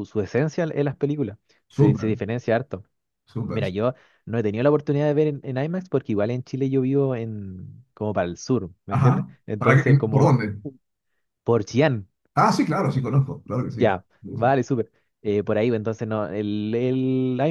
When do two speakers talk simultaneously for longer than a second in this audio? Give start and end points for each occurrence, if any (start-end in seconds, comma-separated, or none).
8.9-10.3